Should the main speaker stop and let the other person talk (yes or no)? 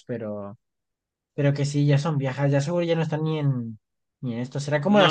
yes